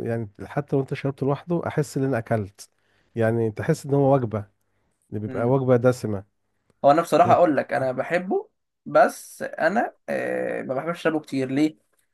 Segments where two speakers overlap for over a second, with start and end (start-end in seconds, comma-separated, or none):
none